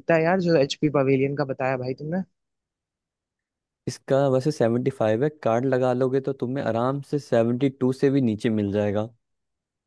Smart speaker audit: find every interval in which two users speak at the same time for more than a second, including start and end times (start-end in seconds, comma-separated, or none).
none